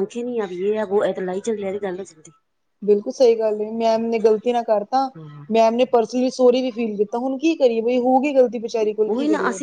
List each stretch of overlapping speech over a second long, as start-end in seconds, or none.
none